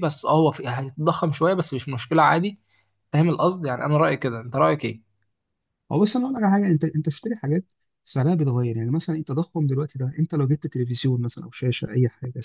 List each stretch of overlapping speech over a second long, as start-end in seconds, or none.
none